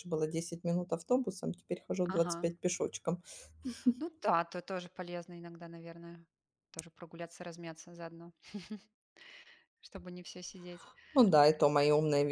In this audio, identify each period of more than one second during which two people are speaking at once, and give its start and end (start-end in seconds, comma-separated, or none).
none